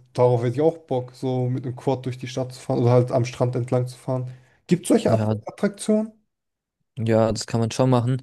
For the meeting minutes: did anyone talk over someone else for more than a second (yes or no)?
no